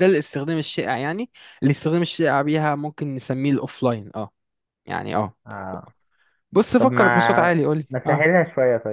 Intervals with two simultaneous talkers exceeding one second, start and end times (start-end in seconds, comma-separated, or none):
6.8-8.3